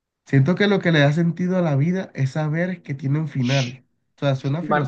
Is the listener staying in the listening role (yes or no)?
no